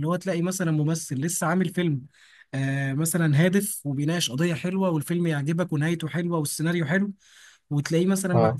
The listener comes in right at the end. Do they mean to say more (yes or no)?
no